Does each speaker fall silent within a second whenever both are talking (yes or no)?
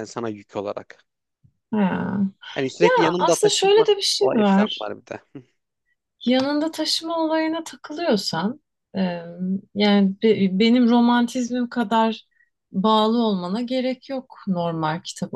no